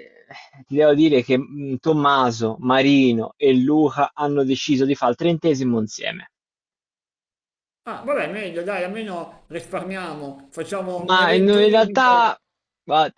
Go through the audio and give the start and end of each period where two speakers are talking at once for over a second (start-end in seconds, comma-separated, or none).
11.1-12.3